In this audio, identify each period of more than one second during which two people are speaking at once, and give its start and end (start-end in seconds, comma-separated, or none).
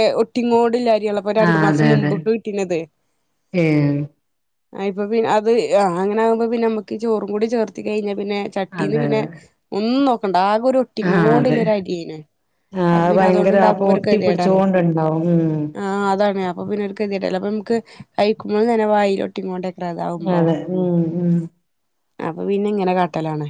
13.1-14.6